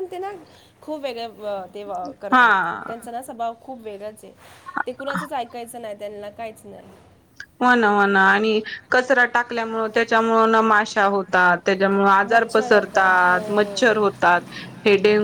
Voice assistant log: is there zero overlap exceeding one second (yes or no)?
no